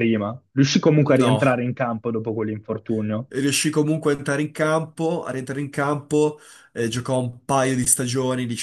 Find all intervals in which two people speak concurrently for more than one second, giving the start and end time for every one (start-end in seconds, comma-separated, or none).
none